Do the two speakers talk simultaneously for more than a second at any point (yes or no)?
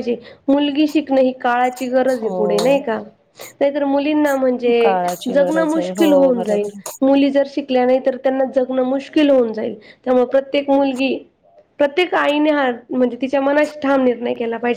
yes